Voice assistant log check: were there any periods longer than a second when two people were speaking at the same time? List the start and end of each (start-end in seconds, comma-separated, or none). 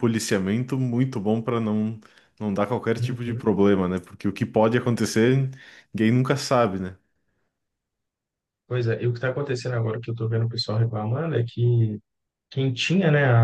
none